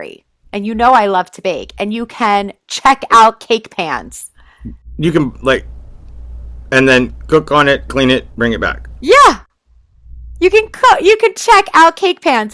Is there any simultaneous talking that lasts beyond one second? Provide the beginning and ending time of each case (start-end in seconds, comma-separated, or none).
none